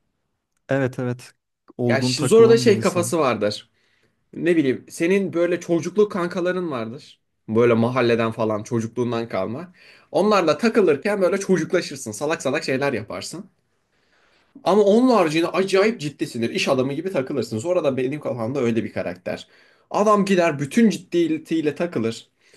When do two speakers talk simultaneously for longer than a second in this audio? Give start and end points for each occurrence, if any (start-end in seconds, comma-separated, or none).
1.9-3.1